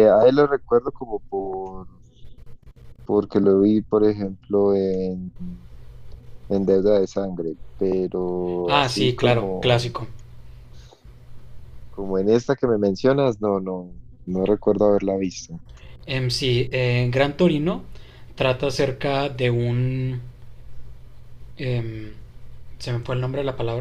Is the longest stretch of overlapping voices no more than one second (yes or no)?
no